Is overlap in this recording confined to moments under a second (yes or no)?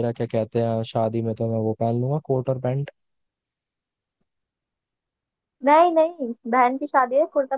yes